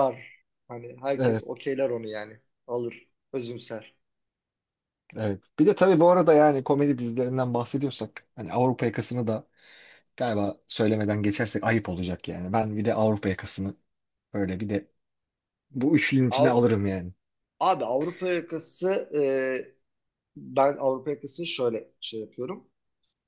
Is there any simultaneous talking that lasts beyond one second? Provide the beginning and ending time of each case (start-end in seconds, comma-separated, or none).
none